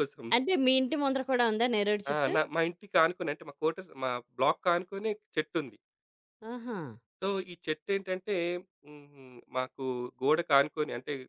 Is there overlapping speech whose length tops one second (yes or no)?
no